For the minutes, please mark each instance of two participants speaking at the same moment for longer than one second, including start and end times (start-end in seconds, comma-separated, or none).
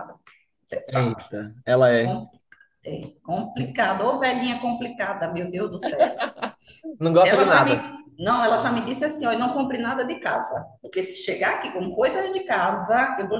none